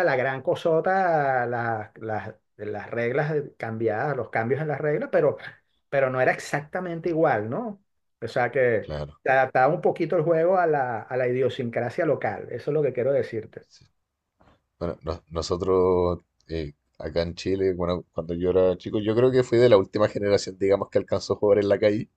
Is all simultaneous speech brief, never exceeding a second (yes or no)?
yes